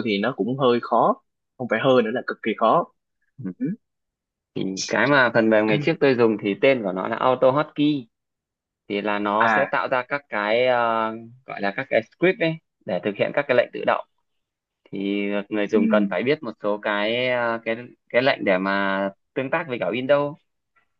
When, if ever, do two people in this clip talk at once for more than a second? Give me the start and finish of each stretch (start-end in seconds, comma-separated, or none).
none